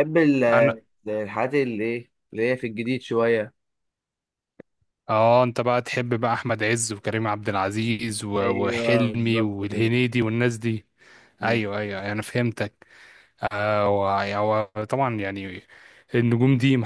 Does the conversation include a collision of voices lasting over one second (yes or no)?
yes